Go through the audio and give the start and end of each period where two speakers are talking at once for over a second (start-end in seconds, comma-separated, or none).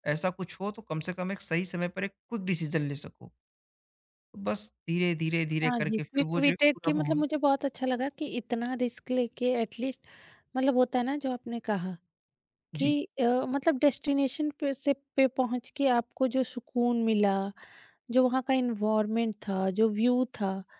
5.6-7.2